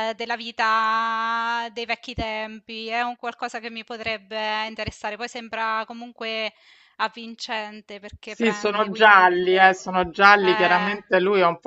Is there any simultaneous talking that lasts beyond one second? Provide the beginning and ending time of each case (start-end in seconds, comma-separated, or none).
8.2-9.8